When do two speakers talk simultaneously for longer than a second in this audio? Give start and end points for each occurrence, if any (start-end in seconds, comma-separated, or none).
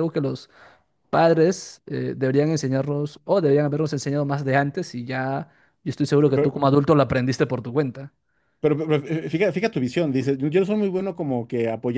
none